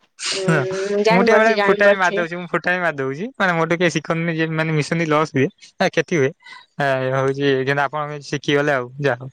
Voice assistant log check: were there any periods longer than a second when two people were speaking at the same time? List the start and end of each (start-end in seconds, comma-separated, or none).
0.5-2.2